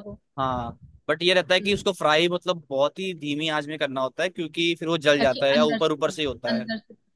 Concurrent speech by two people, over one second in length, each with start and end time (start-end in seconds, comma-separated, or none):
5.2-6.7